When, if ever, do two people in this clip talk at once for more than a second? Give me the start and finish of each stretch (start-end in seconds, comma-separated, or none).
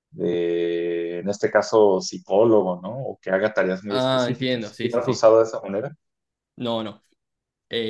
3.9-5.2